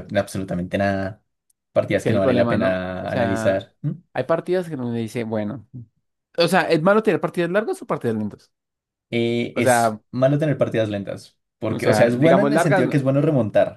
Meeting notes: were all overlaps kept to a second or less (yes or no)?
no